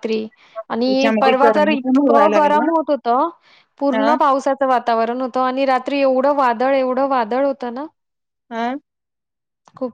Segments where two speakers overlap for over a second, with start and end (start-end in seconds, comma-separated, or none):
0.9-2.7